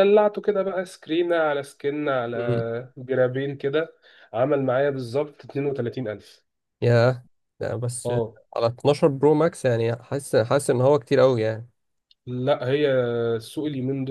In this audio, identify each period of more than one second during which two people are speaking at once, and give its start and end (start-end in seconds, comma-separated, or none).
none